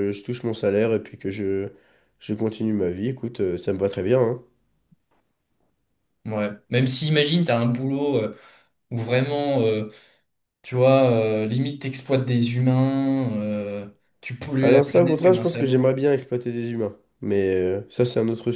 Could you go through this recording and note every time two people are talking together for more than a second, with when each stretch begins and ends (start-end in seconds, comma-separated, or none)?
14.6-15.9